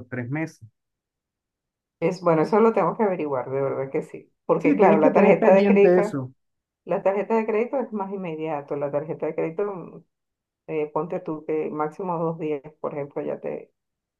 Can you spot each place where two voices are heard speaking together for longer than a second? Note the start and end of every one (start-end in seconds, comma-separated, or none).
4.6-6.0